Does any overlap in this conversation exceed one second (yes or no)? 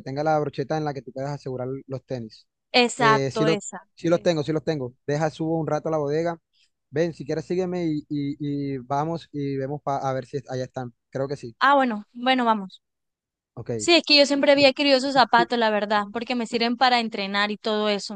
no